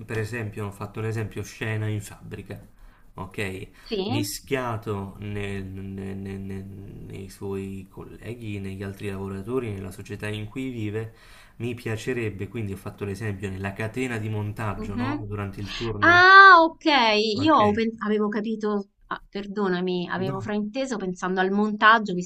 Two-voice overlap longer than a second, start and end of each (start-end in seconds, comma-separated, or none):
none